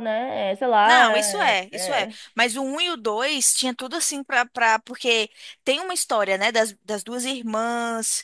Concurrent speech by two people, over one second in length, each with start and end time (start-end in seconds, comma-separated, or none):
0.8-2.1